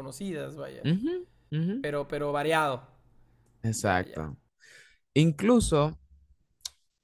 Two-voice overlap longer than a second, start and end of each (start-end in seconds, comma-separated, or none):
none